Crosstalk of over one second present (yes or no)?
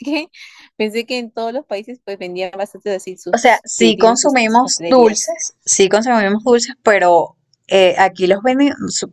yes